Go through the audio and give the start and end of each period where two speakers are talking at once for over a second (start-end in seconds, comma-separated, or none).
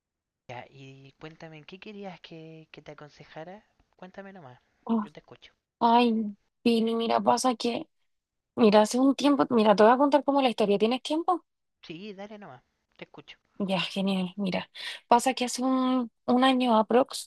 none